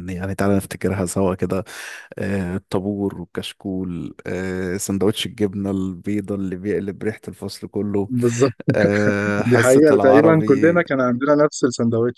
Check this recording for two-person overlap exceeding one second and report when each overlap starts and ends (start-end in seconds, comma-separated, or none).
9.4-10.8